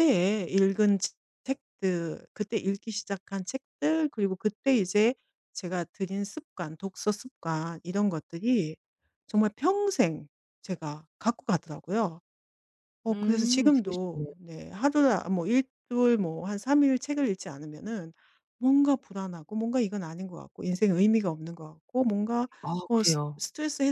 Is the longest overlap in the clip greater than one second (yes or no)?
yes